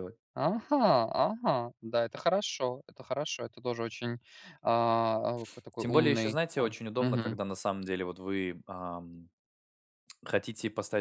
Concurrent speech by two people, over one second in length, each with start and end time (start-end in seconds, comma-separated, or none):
5.8-7.4